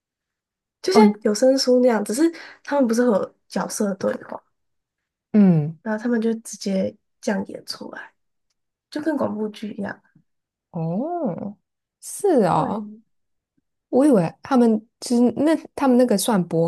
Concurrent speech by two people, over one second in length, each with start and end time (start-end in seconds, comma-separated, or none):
none